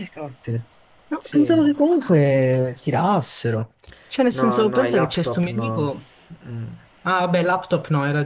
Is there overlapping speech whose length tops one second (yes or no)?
yes